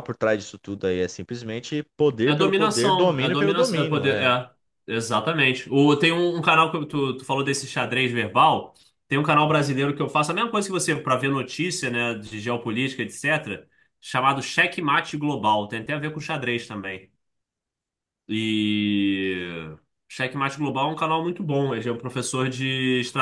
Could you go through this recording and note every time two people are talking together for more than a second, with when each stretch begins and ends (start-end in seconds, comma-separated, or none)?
2.2-4.3